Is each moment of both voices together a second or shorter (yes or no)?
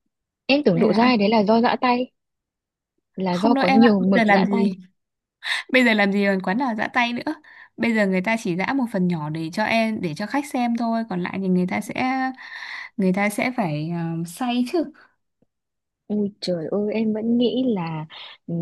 no